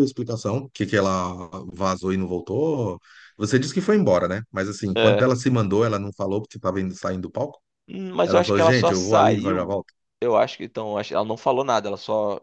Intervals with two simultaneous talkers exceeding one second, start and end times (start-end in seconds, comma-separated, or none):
8.2-9.8